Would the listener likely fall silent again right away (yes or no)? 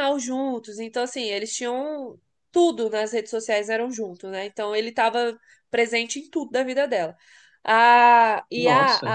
yes